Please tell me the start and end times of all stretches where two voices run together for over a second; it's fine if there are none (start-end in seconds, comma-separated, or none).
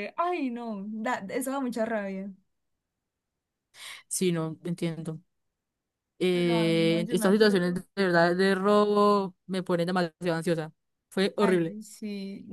6.3-7.8